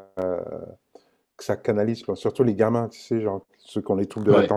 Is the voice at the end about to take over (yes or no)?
no